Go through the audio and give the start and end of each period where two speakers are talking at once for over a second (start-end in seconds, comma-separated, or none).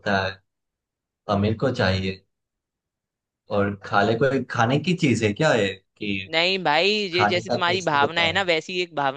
7.1-8.5